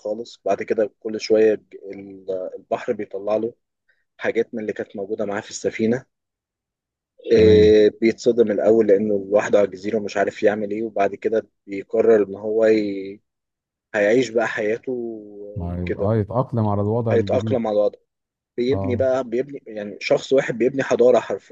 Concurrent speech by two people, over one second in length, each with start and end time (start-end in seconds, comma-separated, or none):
none